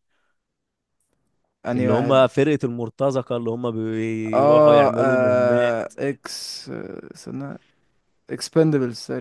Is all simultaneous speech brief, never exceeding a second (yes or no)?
no